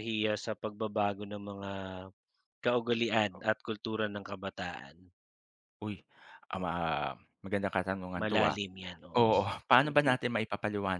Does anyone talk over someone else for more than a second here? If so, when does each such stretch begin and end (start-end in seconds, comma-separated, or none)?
none